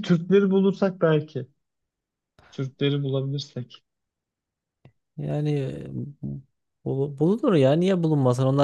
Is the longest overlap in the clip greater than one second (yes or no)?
no